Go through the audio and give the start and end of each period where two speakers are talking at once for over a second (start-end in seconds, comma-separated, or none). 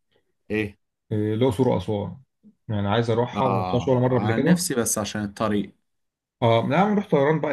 3.3-4.6